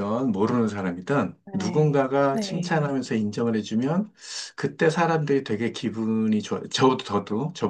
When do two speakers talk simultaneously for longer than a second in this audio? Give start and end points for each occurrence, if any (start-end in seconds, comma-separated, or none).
1.4-3.0